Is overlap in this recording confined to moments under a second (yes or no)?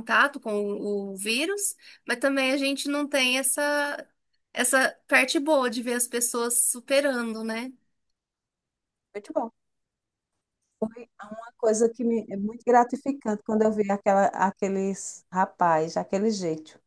yes